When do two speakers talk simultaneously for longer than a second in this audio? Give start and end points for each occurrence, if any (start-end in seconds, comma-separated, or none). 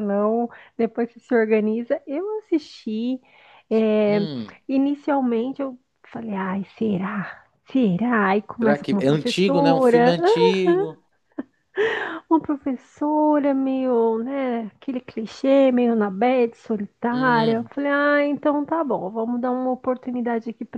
8.6-10.2